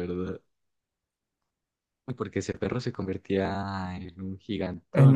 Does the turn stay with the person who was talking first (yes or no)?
no